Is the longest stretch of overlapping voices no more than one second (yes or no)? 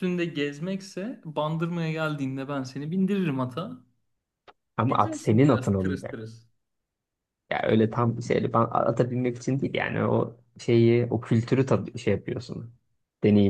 no